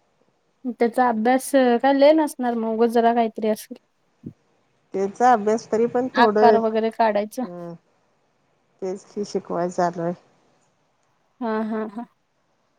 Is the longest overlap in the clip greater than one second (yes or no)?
yes